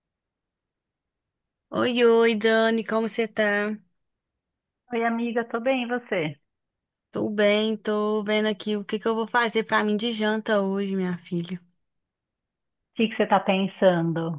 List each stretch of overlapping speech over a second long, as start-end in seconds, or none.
none